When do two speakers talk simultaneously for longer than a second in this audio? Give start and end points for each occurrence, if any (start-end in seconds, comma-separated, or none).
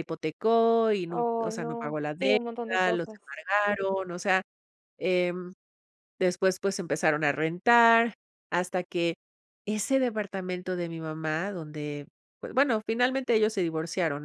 1.1-3.3